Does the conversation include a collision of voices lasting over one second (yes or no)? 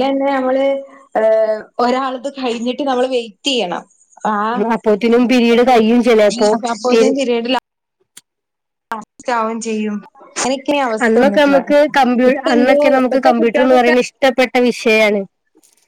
yes